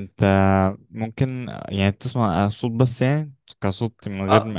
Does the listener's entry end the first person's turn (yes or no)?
yes